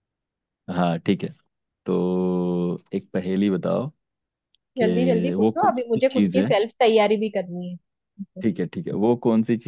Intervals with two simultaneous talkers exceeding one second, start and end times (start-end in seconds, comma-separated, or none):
4.8-6.5